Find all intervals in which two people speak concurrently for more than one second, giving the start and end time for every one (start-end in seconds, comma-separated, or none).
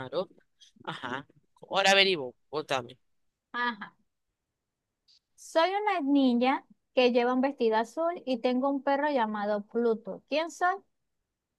none